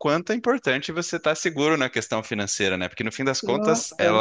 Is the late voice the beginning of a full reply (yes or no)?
no